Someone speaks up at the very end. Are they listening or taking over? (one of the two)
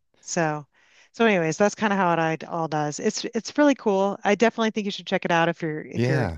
listening